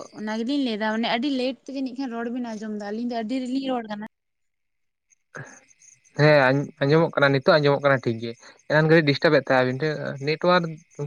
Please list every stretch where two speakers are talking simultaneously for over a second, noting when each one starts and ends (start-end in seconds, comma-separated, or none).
none